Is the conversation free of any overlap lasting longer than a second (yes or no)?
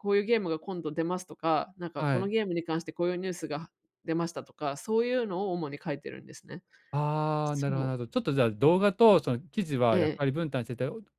yes